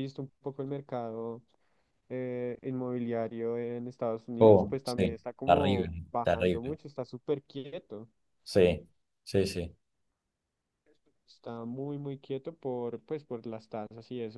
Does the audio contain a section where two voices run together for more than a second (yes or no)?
yes